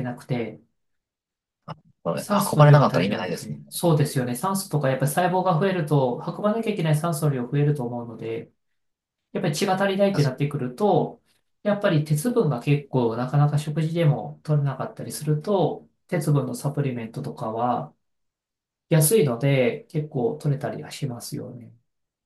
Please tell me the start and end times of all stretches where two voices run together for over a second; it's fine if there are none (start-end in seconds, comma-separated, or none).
2.2-3.8